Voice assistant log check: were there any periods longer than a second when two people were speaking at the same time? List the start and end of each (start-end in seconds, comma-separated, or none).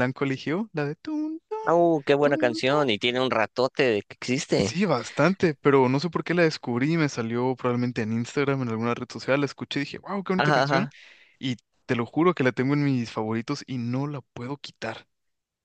none